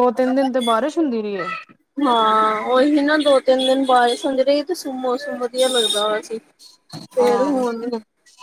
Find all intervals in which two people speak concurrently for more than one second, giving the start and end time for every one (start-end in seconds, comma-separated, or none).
none